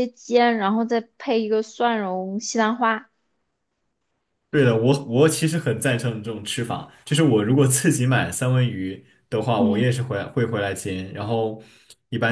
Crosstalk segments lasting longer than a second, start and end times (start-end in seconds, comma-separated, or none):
none